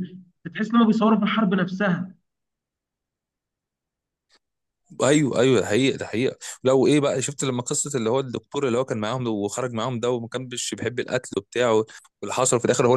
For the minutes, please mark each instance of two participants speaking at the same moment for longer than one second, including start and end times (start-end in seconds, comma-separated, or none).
none